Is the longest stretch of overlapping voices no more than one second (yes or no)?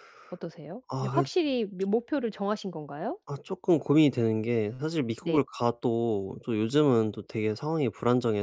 yes